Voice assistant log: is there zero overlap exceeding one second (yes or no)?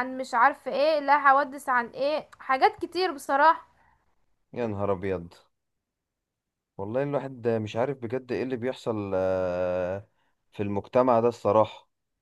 yes